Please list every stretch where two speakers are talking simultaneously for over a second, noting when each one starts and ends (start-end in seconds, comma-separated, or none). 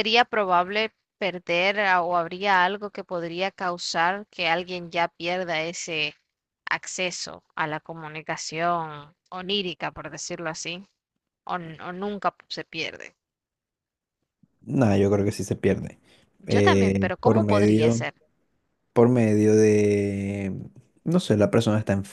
16.5-18.0